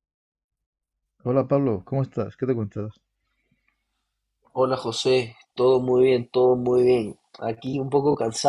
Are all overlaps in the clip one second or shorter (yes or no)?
yes